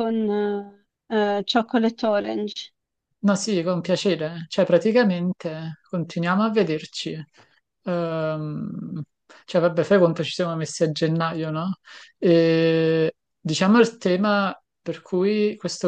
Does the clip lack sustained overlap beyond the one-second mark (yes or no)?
yes